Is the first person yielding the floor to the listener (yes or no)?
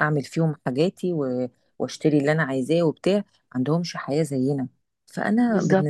no